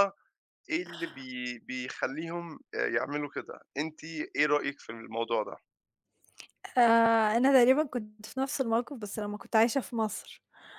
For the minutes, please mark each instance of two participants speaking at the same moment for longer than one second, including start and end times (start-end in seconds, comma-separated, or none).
none